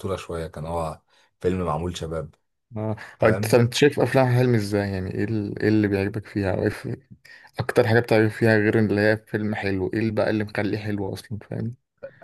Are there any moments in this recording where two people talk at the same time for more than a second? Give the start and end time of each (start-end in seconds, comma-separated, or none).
none